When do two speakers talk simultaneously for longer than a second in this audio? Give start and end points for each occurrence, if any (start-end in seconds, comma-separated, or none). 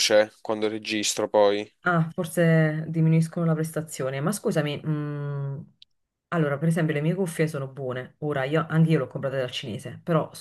none